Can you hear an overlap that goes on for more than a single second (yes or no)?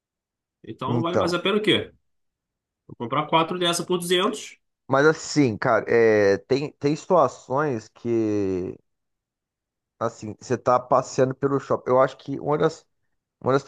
no